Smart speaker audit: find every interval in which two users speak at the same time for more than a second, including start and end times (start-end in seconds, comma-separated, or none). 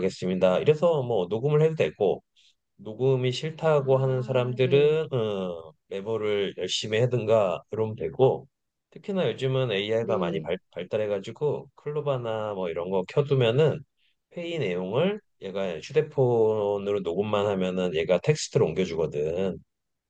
3.8-5.0